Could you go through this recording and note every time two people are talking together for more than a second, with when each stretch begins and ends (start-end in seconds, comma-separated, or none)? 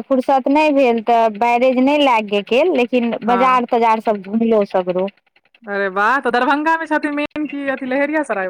none